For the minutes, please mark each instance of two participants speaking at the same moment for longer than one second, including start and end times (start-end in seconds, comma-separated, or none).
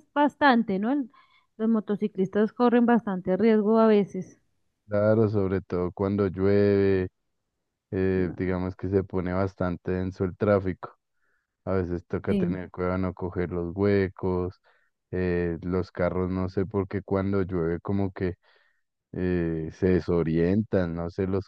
none